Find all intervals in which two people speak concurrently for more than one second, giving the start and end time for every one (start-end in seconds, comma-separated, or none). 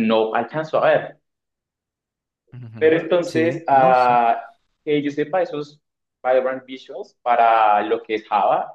2.8-4.2